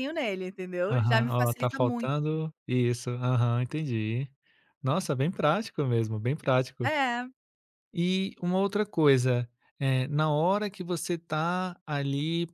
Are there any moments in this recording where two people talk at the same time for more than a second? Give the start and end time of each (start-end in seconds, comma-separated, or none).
0.9-2.4